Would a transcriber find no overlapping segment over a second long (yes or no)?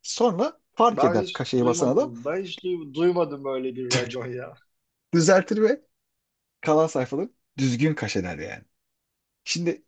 no